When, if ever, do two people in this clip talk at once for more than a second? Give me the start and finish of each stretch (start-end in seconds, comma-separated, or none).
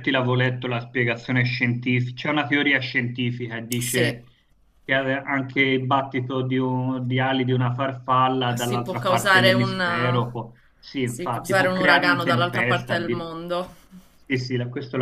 8.6-10.2, 11.0-13.2